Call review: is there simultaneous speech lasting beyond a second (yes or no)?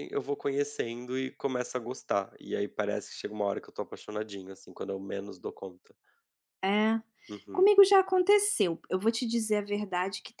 no